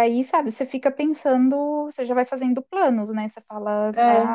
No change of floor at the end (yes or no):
yes